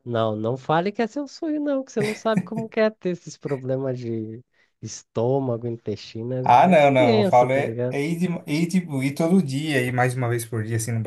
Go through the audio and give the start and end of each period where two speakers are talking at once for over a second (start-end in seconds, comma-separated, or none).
6.4-8.0